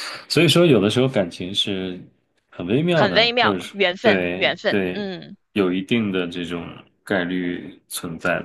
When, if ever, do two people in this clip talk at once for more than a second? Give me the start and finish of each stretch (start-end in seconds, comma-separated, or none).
2.9-5.0